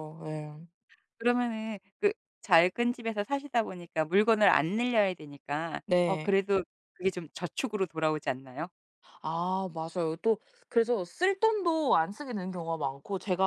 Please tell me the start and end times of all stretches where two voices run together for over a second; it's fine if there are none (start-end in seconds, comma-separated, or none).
none